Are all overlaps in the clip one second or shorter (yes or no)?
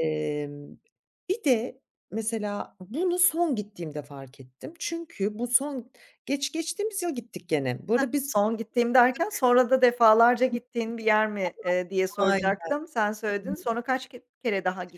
yes